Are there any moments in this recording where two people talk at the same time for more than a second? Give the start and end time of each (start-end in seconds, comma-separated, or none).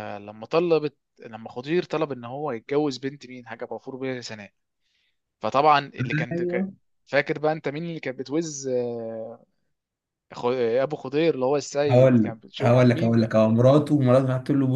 11.9-13.4